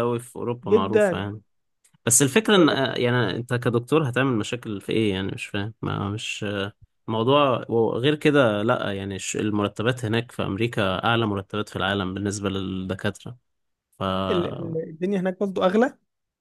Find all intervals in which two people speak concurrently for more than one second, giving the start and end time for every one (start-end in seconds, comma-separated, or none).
none